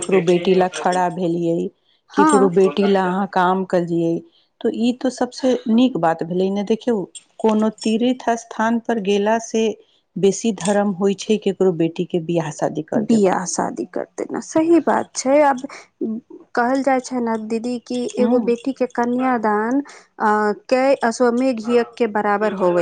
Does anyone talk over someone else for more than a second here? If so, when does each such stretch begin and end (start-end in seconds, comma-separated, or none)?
2.2-3.6